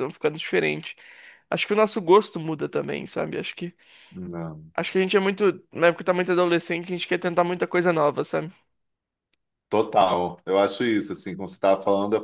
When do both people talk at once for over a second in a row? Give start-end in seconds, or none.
none